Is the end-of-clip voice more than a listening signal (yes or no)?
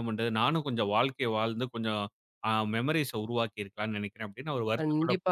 yes